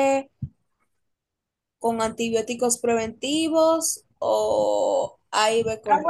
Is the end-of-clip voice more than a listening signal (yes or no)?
yes